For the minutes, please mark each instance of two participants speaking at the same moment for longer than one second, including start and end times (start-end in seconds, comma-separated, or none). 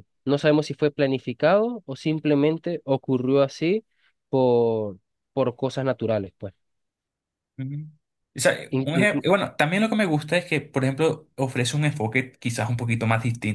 none